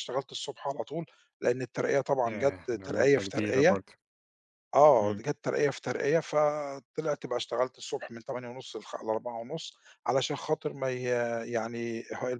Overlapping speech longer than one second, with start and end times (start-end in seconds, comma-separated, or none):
2.2-3.8